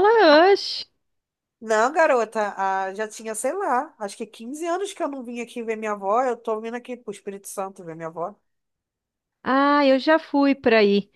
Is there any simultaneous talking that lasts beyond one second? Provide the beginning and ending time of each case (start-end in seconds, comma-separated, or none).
none